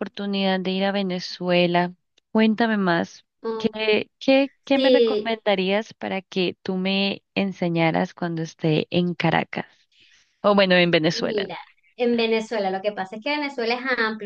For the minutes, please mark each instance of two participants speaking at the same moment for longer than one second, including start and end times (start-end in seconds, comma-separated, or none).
none